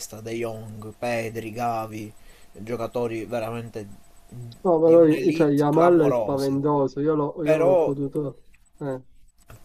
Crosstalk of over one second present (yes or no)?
yes